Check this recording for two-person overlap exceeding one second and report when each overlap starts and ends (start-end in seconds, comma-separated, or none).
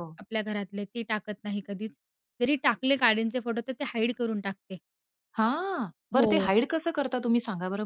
none